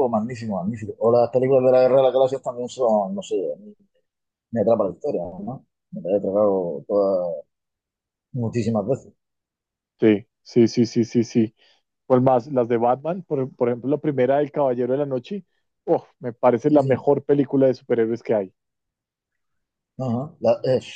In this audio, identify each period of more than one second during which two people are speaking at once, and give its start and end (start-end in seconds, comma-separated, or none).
none